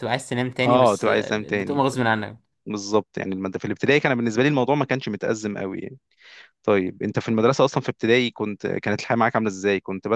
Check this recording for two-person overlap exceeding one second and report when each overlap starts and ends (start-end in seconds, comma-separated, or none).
0.6-1.9